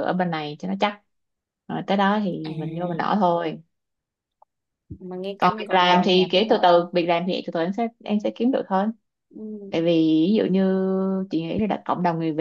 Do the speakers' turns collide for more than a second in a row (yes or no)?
yes